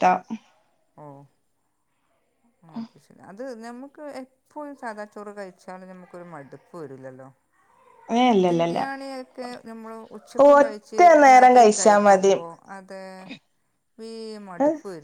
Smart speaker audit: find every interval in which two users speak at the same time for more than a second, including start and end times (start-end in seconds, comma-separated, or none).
10.5-12.3